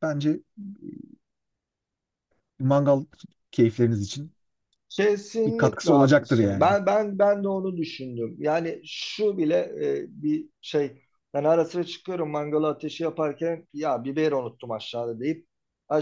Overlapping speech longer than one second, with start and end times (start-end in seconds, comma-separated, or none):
5.5-6.7